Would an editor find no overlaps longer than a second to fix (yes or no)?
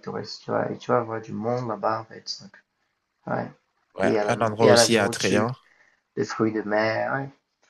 no